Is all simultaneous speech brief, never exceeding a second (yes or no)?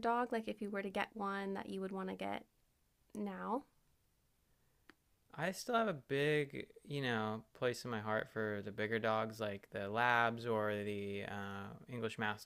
yes